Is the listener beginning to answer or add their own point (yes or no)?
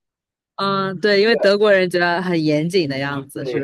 yes